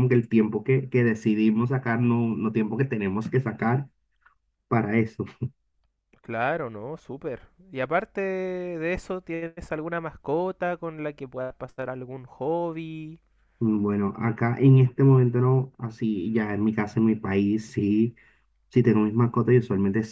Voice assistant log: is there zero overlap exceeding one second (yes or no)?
yes